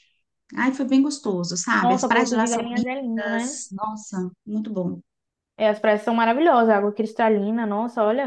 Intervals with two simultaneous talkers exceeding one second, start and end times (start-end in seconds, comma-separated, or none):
1.8-3.6